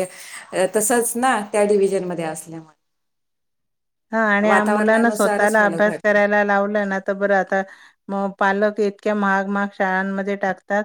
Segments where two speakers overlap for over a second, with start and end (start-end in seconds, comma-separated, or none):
4.5-6.2